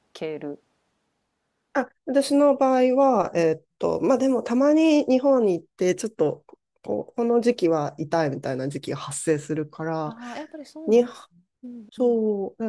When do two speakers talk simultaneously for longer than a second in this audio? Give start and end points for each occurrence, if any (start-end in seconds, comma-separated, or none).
none